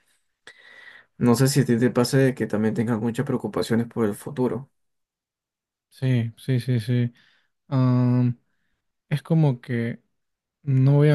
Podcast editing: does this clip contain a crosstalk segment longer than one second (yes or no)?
no